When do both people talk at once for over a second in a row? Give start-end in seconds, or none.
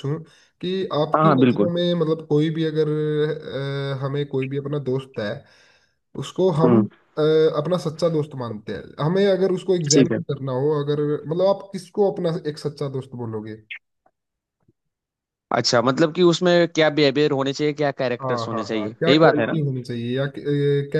18.2-19.6